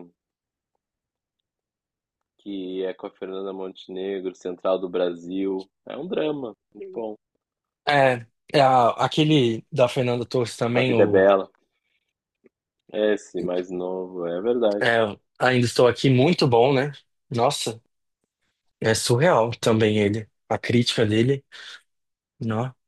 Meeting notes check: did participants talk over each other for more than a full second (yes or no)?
no